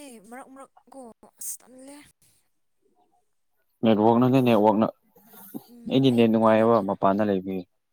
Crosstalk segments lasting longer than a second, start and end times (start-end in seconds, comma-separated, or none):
5.7-6.9